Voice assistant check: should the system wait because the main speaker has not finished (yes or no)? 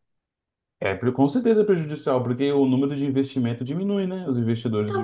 no